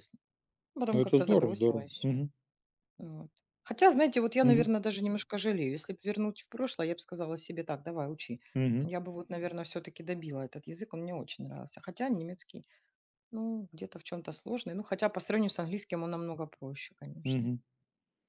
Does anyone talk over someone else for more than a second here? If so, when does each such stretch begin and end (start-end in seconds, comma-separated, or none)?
0.9-2.2